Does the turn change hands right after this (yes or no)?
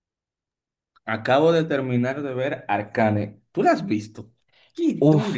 yes